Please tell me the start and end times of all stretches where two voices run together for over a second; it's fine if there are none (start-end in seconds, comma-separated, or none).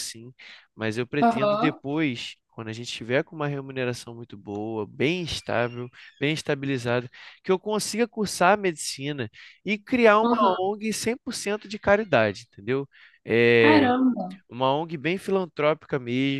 none